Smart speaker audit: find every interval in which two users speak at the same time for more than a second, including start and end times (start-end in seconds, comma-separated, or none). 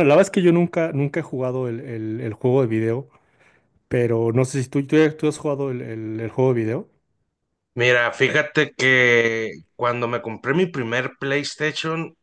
none